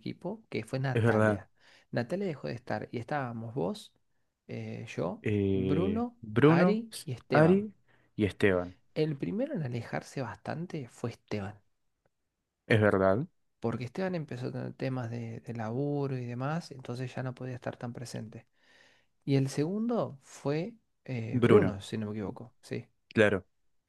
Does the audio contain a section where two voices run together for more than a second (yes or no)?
yes